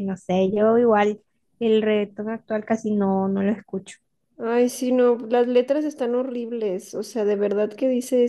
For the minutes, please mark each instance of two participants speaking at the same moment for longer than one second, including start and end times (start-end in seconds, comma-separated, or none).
none